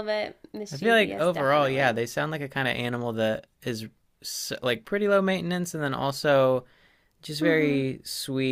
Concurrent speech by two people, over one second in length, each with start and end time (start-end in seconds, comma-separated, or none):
0.7-2.0